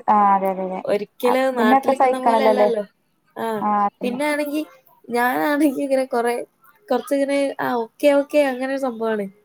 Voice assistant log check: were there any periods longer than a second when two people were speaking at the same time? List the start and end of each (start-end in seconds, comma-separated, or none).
1.3-2.7